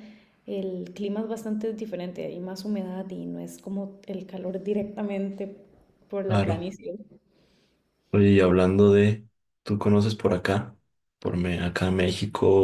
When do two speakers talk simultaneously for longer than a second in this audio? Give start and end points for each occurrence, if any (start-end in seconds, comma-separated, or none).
none